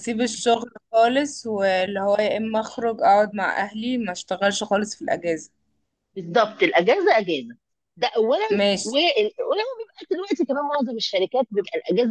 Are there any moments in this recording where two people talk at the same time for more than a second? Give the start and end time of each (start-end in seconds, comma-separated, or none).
none